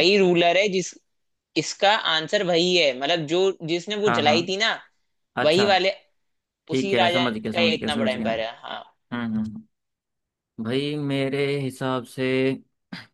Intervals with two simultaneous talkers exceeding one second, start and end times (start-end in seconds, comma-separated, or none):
6.8-8.7